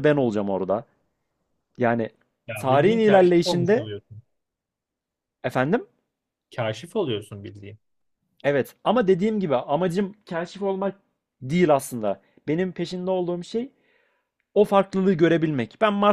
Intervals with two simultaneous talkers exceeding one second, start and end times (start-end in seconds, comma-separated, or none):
2.5-3.9